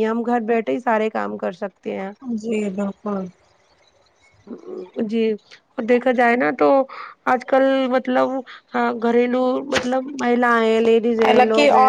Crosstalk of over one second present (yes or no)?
no